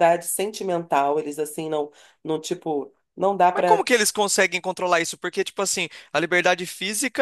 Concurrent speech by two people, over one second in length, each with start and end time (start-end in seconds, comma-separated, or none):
none